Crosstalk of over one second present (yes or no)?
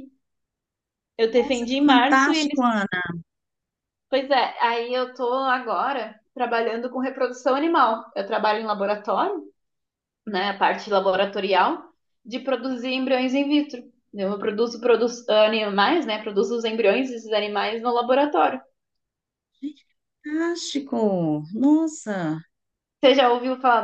yes